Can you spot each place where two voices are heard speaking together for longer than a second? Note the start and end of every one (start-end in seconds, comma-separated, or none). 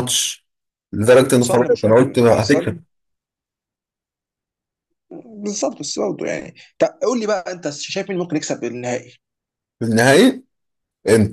1.4-2.8